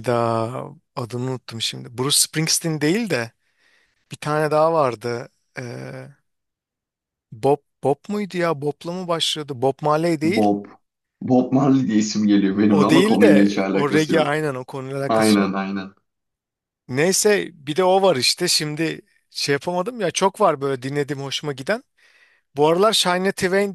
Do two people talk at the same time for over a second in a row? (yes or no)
yes